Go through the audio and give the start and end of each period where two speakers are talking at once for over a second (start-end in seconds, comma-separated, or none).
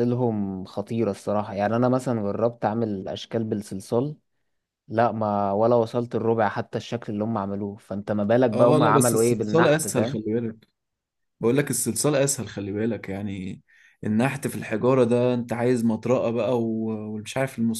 8.5-10.2